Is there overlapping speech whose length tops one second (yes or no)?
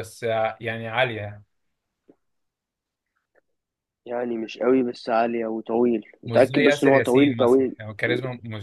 yes